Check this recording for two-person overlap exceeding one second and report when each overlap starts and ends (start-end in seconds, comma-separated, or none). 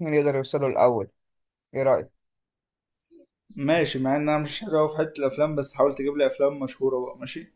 none